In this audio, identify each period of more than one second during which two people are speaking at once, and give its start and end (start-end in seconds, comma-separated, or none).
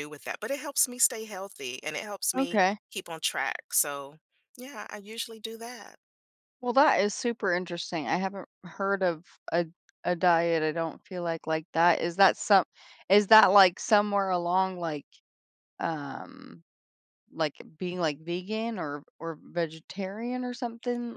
none